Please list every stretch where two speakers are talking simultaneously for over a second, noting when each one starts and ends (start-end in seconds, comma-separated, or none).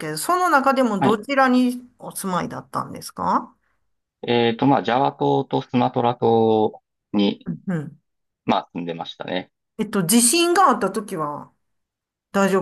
none